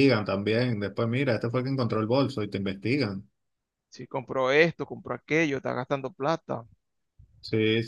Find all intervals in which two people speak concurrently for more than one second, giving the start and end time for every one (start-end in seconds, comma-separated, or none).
none